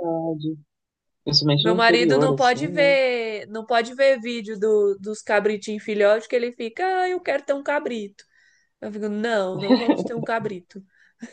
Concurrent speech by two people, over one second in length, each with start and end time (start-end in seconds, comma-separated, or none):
1.6-3.0